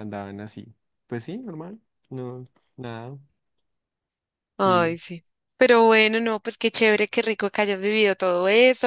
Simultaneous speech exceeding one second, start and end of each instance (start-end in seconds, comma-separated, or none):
none